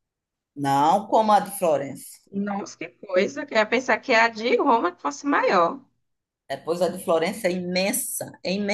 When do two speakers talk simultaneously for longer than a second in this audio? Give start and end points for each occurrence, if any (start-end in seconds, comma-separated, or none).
none